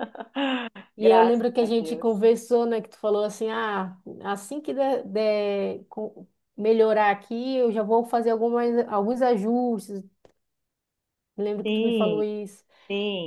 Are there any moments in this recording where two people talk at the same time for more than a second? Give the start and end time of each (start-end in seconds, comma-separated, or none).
1.0-2.3